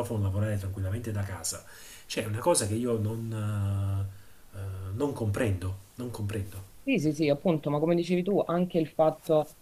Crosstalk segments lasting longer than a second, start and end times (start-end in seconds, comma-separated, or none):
none